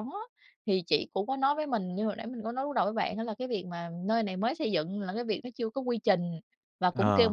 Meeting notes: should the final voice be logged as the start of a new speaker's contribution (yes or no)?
no